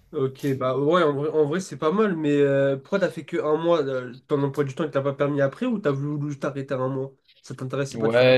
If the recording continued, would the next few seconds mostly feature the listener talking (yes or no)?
yes